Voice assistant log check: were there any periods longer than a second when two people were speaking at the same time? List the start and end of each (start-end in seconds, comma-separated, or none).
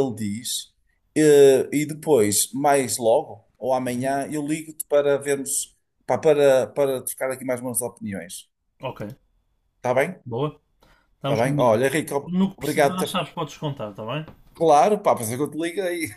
11.2-13.2